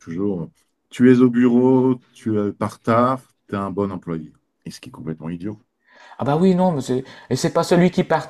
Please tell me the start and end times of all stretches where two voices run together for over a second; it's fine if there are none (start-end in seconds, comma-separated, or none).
none